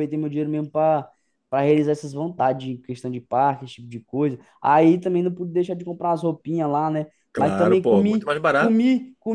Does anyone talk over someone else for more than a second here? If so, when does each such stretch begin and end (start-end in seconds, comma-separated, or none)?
7.3-8.8